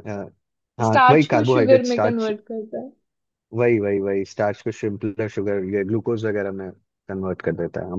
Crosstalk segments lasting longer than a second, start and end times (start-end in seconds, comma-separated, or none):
0.8-2.3